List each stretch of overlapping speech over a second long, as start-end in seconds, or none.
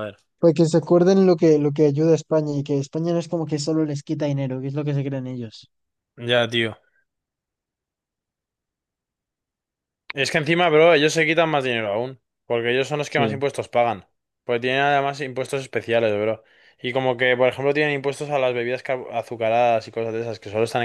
none